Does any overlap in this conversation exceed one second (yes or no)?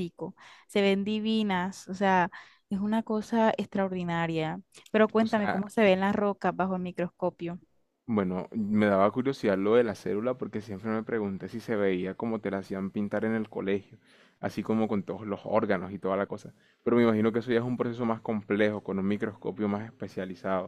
no